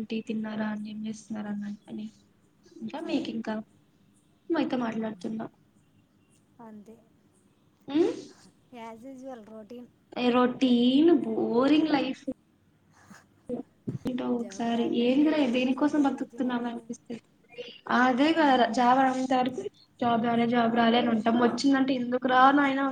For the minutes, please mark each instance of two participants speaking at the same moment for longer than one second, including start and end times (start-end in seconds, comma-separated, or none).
14.4-16.8